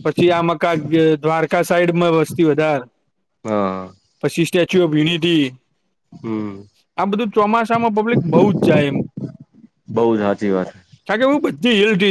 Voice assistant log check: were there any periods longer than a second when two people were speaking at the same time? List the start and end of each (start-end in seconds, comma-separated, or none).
none